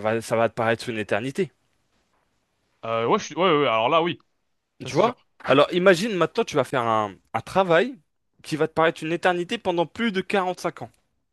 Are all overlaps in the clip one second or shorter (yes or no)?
yes